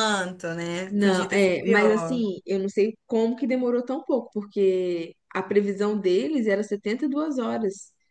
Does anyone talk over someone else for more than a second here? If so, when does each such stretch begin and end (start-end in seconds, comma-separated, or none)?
0.9-2.2